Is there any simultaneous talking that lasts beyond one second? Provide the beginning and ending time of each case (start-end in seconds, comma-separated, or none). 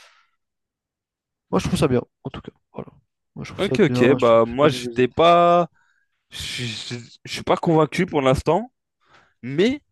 3.6-5.0